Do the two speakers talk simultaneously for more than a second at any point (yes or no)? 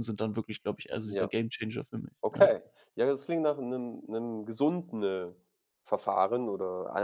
no